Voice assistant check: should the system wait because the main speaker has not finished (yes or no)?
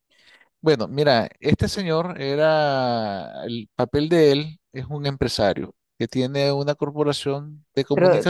no